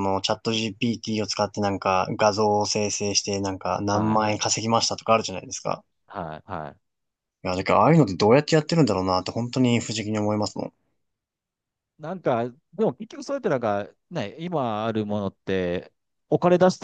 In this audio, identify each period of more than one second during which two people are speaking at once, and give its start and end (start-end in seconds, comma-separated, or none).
none